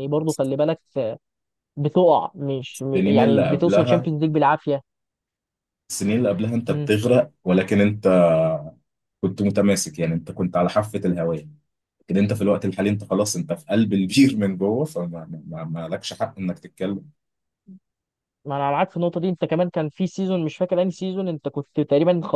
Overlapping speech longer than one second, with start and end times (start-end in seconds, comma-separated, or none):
2.7-4.1